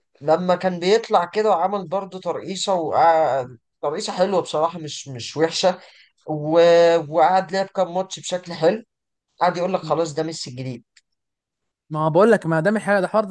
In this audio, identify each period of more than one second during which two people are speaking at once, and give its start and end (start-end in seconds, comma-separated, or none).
none